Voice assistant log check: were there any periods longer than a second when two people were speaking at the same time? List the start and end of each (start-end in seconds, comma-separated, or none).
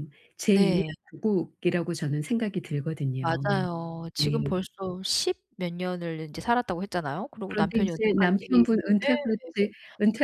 7.5-9.2